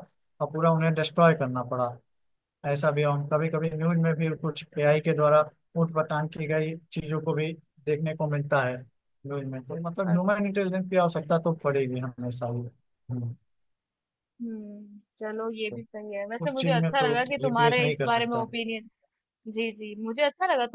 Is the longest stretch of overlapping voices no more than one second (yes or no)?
no